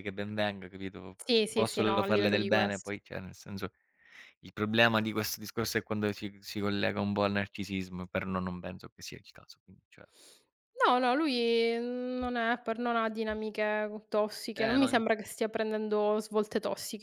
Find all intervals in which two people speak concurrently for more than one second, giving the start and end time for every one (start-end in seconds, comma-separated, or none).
1.3-2.9